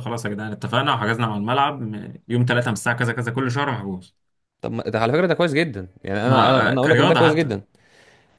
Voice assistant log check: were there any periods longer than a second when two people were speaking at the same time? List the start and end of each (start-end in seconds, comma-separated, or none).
6.2-7.5